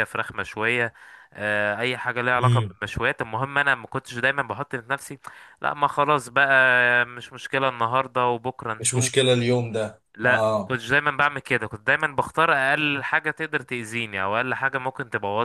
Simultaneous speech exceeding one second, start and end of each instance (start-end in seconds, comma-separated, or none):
none